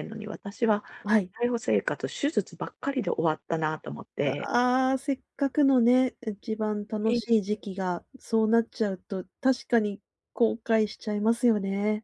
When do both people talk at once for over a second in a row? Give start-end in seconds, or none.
none